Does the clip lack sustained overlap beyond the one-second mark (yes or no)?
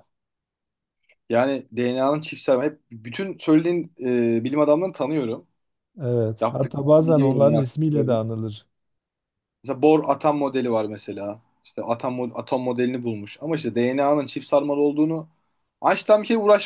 no